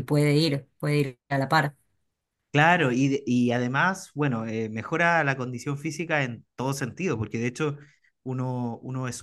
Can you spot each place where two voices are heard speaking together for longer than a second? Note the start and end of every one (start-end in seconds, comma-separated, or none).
none